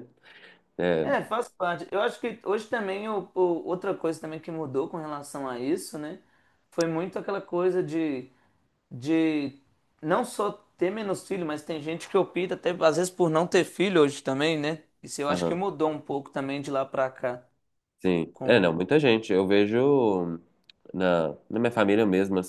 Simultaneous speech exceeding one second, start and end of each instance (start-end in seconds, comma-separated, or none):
none